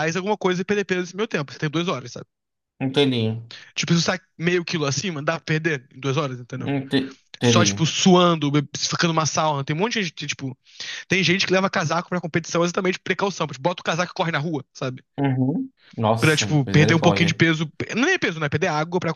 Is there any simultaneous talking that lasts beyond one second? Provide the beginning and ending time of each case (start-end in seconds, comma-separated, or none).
16.2-17.4